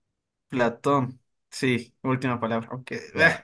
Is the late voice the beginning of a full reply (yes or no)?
yes